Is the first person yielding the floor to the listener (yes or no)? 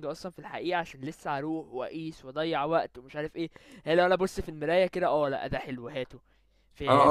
yes